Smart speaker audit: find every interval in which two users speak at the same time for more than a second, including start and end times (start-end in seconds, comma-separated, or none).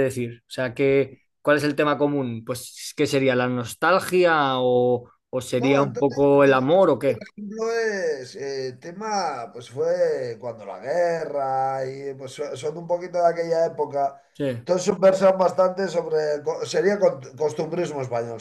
5.6-7.2